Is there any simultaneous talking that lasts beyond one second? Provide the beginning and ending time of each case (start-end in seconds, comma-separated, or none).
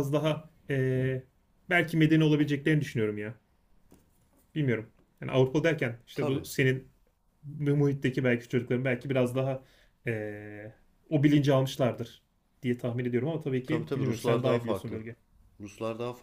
13.7-15.0